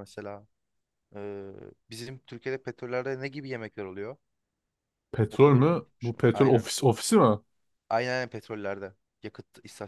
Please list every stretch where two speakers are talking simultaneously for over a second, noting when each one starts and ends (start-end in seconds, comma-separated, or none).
5.3-6.7